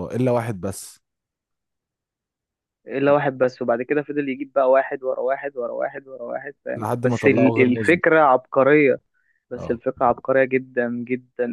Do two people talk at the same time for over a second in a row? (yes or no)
yes